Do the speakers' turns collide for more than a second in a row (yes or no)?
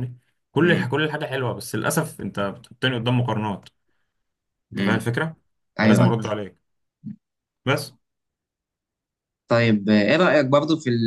no